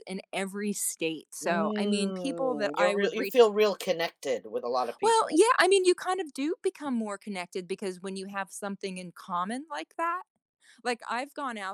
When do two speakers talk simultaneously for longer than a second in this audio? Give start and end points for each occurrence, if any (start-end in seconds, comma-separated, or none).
1.4-3.4